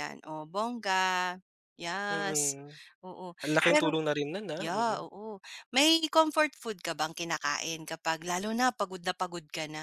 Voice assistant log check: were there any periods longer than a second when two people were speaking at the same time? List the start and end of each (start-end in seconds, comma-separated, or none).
none